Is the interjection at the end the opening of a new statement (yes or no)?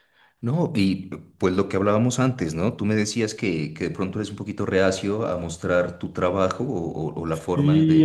yes